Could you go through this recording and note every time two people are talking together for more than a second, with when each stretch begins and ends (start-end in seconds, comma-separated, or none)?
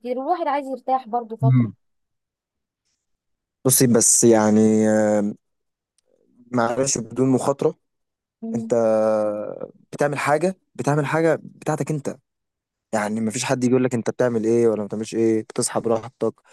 none